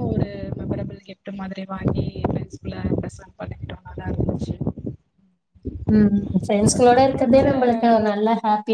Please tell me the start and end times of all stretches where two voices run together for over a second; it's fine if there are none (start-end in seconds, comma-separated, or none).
none